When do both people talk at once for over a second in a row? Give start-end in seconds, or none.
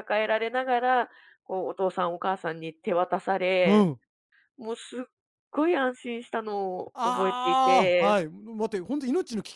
6.9-8.2